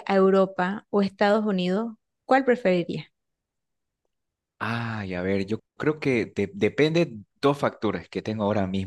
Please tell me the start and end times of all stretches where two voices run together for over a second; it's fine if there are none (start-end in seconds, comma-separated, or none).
none